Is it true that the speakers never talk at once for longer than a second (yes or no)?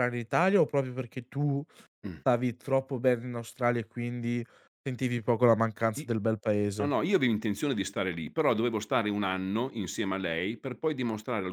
yes